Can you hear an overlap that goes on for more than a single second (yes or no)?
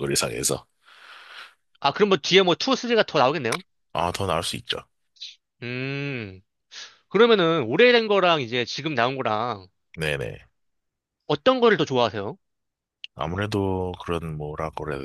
no